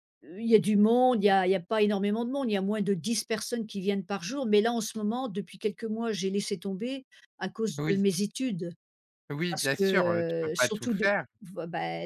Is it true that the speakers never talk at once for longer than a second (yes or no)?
yes